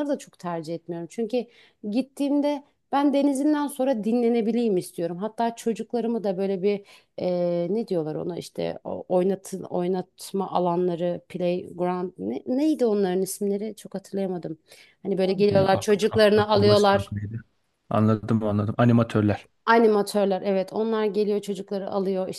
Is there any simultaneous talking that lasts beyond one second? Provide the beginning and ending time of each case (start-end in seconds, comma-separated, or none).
15.5-17.1